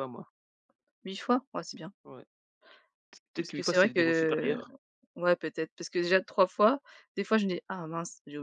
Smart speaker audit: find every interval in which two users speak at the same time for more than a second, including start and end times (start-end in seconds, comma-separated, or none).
3.4-4.6